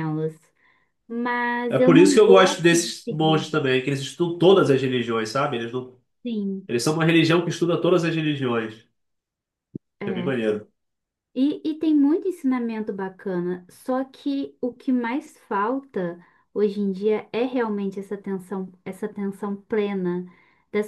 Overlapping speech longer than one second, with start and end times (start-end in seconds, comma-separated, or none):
1.7-3.5